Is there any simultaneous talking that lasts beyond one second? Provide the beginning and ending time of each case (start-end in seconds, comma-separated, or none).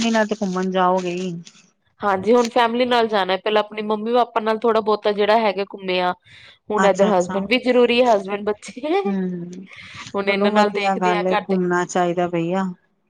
10.2-11.6